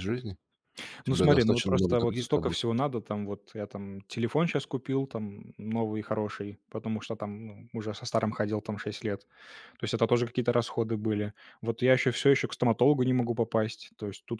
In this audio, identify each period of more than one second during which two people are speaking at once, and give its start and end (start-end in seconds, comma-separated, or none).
1.1-2.6